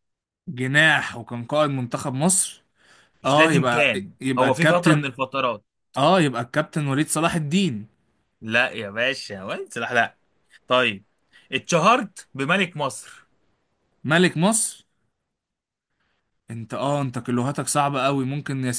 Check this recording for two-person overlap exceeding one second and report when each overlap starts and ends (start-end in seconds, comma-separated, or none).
3.2-5.1